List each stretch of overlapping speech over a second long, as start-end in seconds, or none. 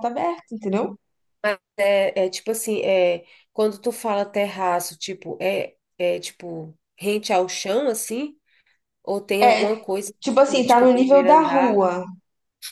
9.4-11.9